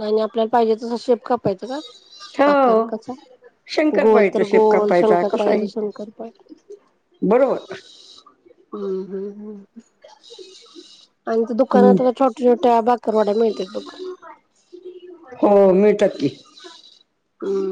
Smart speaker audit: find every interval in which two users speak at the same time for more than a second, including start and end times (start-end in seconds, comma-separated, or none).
4.0-5.7